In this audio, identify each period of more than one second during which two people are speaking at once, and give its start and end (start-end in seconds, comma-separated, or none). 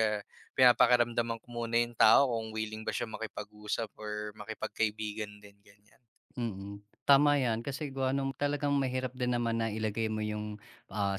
none